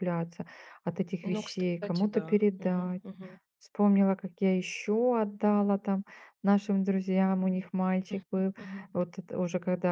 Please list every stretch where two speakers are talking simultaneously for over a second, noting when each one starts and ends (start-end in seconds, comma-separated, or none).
1.2-3.0